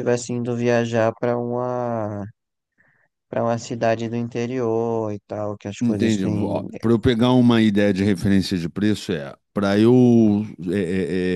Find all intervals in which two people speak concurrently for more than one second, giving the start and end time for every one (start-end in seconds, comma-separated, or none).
none